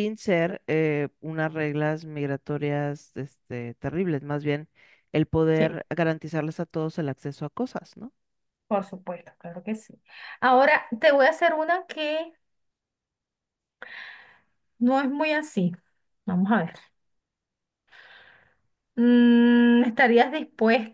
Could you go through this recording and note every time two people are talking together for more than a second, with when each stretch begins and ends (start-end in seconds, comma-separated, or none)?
none